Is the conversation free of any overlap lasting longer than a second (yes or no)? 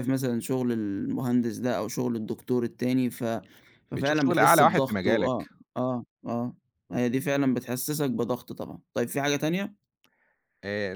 no